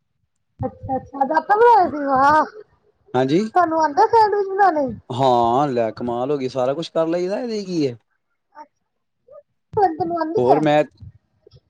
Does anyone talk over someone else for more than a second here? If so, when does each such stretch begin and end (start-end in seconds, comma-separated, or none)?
none